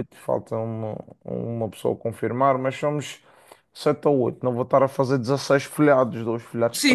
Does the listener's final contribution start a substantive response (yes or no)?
yes